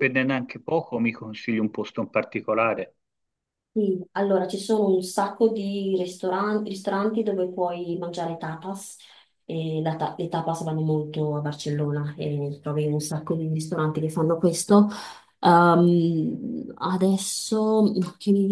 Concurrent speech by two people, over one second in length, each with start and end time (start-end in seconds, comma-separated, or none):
none